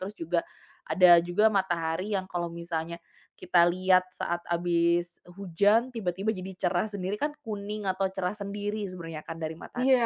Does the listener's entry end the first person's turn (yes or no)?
yes